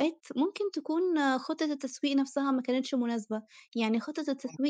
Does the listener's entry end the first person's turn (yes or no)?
no